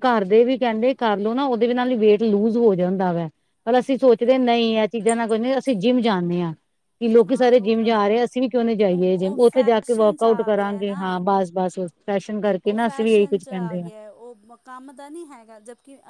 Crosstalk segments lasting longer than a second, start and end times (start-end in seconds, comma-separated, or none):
8.9-11.1